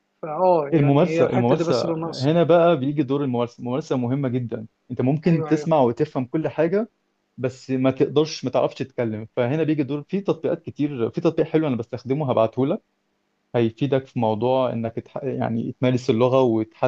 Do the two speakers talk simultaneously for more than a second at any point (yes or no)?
yes